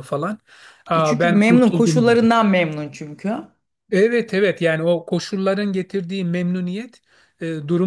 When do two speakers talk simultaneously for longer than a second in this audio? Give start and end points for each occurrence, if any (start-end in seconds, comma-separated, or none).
0.9-2.3